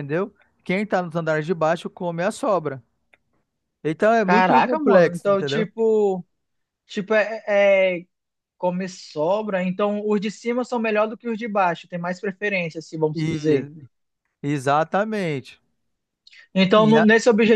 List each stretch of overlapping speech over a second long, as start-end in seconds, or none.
4.2-5.7